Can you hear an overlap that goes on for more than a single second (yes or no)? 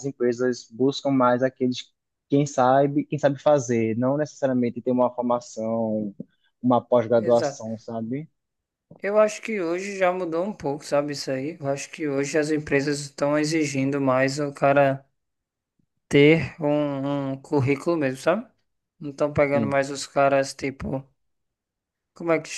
no